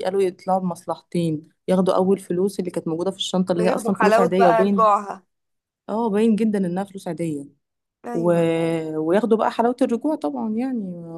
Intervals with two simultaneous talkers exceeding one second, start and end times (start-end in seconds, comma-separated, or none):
3.6-4.9